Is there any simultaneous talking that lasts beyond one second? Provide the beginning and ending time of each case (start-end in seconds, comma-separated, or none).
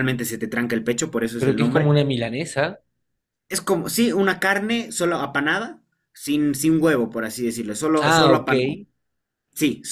none